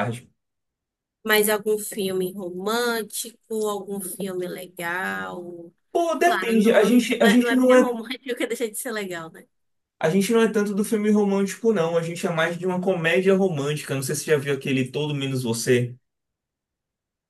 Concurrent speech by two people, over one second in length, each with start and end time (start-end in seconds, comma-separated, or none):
6.2-8.0